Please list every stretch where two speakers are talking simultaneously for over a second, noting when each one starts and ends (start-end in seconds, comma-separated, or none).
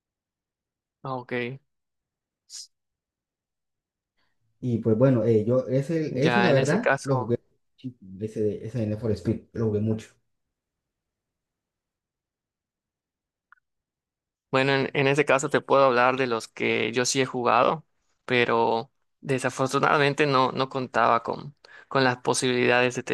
6.1-7.4